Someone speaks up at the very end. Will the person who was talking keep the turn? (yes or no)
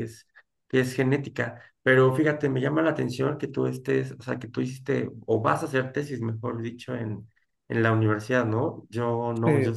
yes